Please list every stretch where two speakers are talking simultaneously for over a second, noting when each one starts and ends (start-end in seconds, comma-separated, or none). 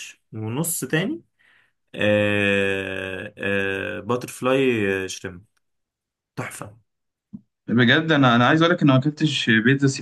none